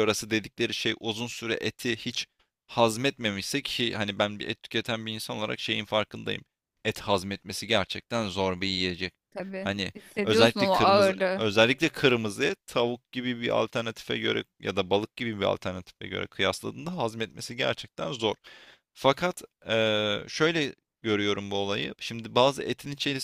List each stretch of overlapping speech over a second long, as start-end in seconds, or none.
9.6-11.4